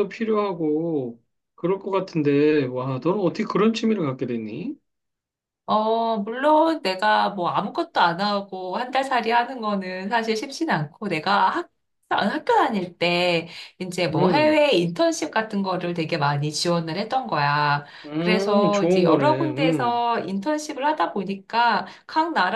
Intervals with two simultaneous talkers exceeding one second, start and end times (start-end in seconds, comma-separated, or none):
18.1-20.0